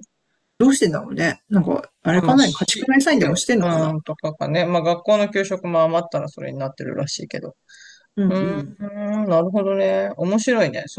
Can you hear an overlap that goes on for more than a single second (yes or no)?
yes